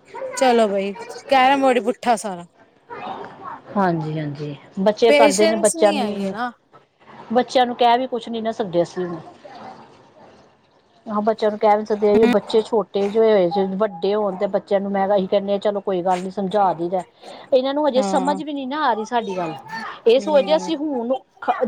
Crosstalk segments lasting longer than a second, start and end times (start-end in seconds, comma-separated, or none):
5.1-6.3